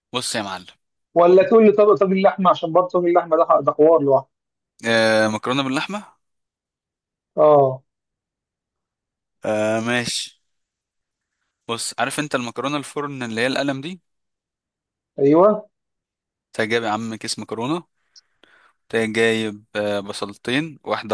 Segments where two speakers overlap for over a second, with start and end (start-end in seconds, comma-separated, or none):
none